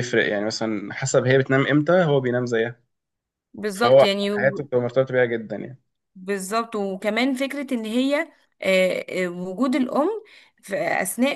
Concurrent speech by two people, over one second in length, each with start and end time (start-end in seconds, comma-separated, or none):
none